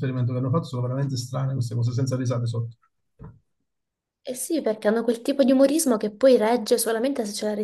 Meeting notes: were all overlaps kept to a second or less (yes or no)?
yes